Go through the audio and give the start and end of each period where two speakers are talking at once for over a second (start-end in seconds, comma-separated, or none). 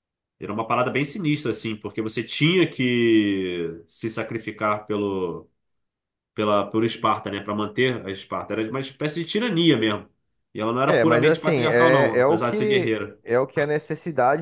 10.8-13.2